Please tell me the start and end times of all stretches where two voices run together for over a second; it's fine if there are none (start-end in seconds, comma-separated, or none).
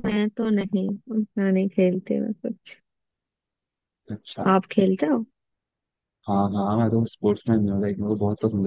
none